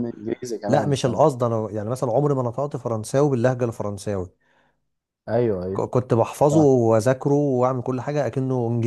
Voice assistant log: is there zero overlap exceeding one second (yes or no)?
yes